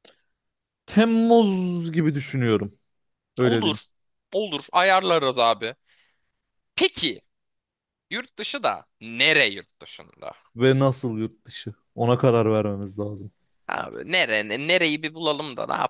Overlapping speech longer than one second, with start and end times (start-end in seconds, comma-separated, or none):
none